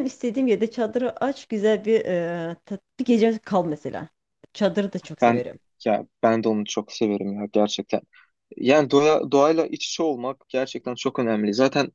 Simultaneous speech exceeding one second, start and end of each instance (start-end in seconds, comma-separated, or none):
none